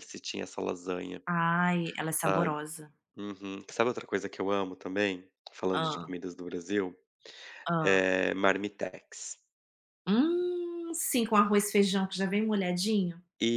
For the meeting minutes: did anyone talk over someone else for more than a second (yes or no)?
no